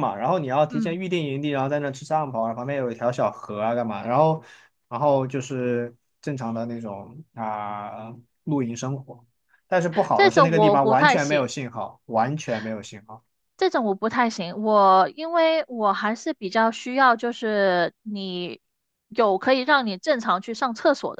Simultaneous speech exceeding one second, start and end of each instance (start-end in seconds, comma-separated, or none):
10.1-11.5